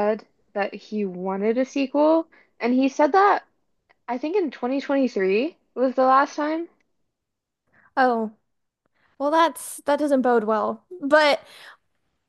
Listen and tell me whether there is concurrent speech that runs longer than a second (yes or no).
no